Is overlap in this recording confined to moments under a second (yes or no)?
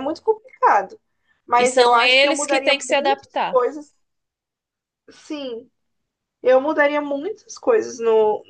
no